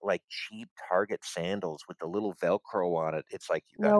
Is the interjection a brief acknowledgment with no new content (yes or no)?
yes